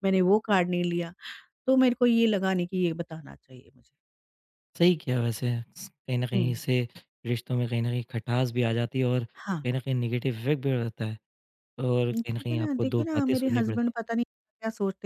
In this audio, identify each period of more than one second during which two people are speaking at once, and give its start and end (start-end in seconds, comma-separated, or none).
12.1-13.9